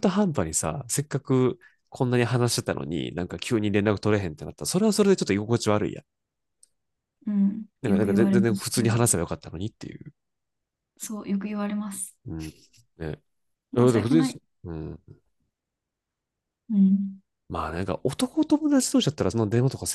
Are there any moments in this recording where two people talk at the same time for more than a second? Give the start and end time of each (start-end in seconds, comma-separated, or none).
7.8-9.1